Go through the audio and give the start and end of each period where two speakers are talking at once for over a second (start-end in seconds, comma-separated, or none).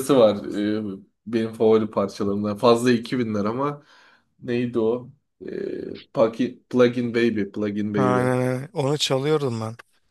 none